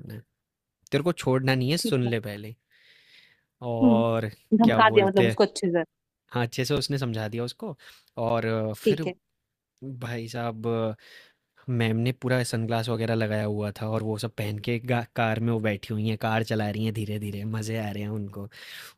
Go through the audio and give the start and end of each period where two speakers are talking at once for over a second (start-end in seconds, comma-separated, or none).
3.8-5.4